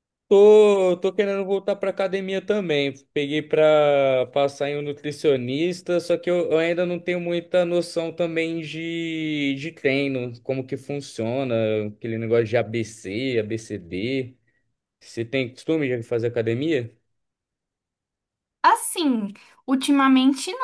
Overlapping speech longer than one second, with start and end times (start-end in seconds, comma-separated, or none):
none